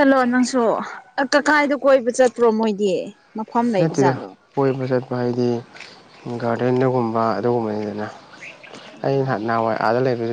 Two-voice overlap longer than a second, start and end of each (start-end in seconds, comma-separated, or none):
none